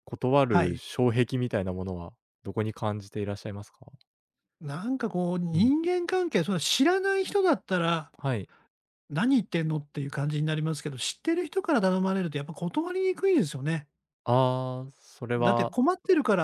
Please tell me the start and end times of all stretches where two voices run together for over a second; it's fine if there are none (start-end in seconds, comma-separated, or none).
none